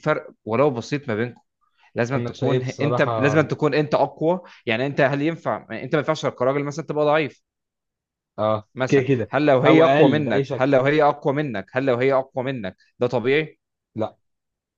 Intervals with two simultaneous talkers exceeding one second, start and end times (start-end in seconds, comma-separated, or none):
2.1-3.4, 8.8-10.7